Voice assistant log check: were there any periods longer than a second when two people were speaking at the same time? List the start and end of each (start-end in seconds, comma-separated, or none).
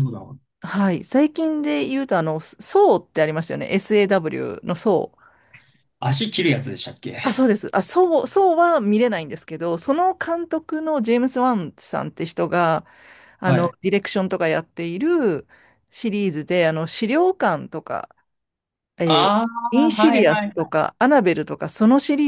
19.0-20.8